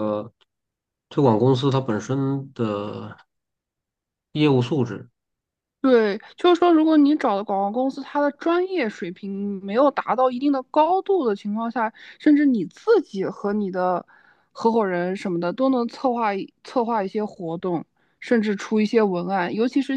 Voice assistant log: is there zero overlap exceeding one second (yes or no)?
yes